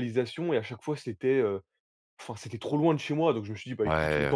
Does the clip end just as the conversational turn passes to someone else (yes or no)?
yes